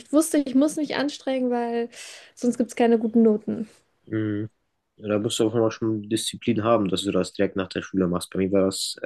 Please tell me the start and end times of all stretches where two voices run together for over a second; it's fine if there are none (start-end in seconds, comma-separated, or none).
none